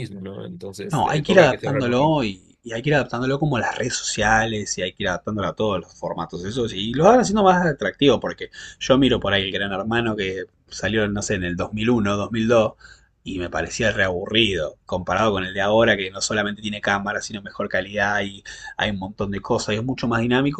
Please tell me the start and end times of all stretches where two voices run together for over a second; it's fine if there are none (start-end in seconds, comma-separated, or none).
0.9-2.2